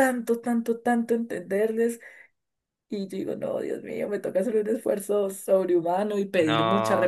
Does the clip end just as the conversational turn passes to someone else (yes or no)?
yes